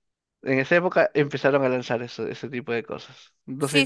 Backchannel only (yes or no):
no